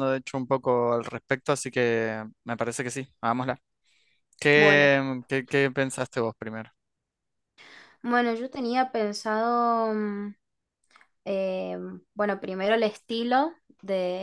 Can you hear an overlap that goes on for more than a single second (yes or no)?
no